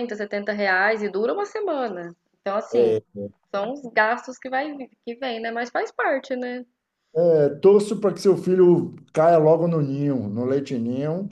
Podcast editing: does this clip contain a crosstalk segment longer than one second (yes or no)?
no